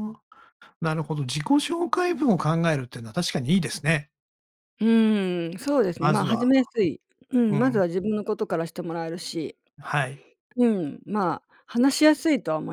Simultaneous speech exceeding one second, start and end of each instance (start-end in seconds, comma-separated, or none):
none